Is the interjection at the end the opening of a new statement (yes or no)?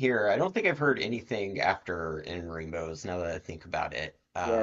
yes